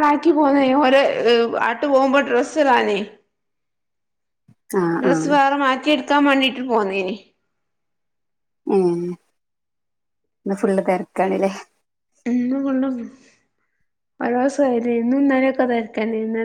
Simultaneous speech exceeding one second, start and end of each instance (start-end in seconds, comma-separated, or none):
none